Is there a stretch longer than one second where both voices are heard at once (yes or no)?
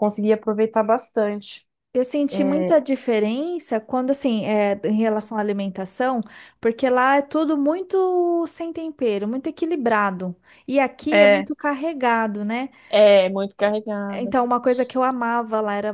no